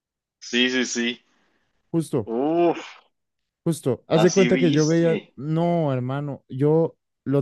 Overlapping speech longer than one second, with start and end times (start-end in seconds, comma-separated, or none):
4.1-5.3